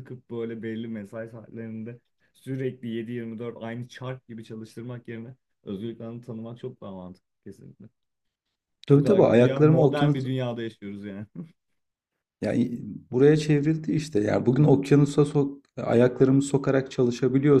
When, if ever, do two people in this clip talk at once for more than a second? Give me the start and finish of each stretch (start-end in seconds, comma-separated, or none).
8.9-10.3